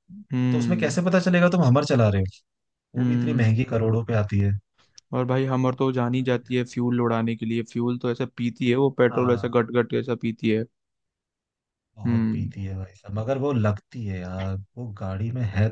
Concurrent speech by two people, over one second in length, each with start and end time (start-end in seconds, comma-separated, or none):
none